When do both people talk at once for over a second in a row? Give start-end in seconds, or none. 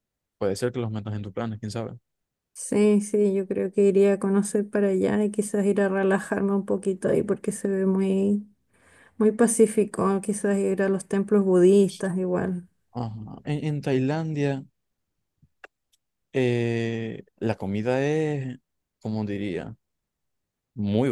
none